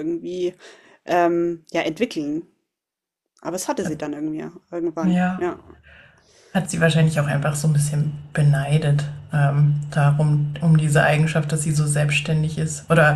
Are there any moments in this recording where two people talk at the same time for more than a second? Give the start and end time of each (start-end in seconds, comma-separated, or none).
none